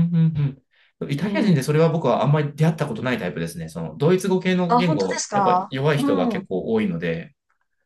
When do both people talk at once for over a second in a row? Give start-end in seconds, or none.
4.7-6.4